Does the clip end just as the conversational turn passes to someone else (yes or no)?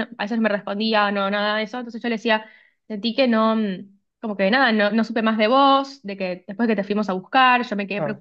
yes